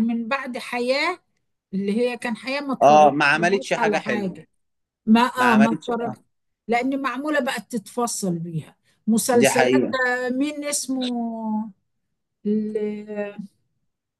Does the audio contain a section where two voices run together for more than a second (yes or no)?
yes